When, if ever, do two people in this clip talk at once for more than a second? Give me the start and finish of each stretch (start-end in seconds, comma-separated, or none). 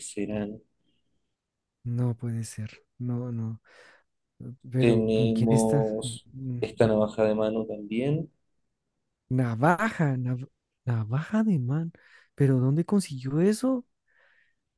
4.8-6.6